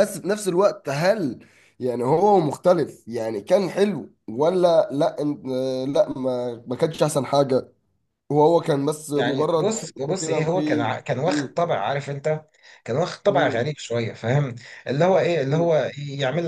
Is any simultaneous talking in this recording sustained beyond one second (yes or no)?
yes